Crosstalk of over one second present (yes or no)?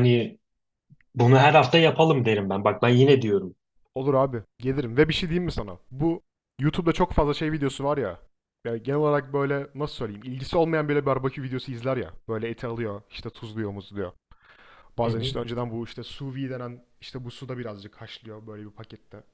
no